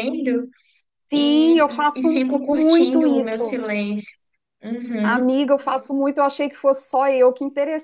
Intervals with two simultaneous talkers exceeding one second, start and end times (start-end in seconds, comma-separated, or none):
1.1-3.6